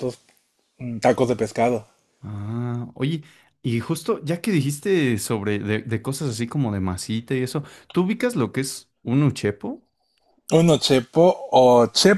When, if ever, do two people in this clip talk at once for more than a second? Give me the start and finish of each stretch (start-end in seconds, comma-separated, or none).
none